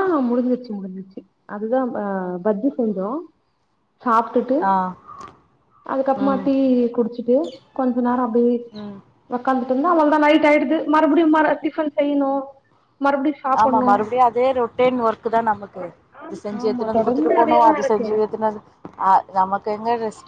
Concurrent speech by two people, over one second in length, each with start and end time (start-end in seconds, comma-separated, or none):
16.2-18.1